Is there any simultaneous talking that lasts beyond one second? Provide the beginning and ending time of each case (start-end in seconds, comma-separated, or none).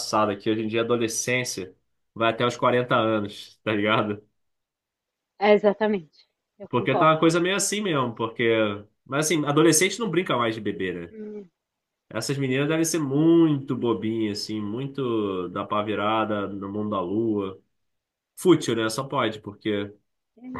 none